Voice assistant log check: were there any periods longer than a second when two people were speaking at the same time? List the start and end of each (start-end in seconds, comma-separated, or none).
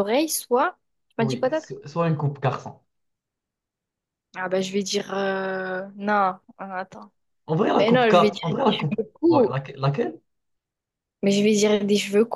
7.8-9.5